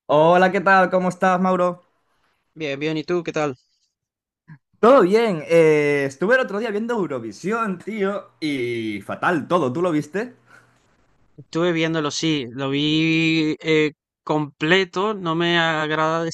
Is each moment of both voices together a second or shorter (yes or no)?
yes